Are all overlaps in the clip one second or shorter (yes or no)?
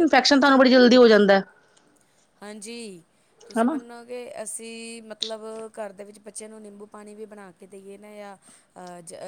yes